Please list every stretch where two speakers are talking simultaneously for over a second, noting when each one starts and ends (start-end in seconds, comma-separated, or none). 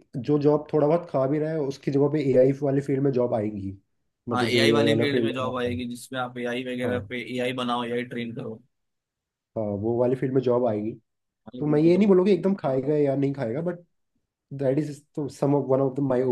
4.3-5.8